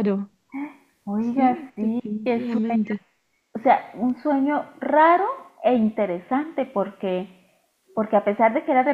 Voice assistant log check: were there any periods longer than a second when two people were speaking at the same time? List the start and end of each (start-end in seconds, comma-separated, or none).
1.2-2.9